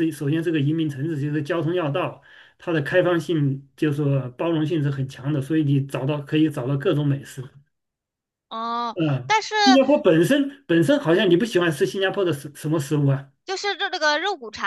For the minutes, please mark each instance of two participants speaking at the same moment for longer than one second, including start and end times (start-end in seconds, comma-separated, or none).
none